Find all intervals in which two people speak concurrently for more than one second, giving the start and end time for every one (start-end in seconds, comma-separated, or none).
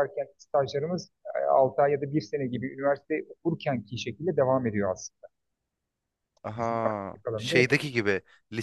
6.6-7.8